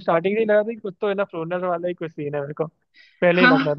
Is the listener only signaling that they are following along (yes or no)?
no